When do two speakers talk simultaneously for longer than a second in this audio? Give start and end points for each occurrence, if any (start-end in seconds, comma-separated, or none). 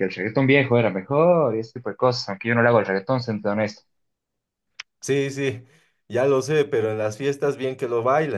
none